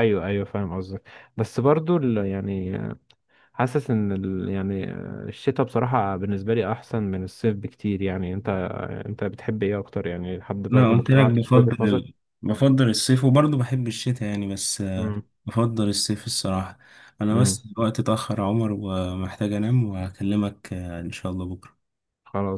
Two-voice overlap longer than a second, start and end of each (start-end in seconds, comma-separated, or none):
10.7-12.1